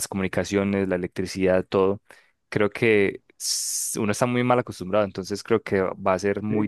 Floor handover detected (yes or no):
yes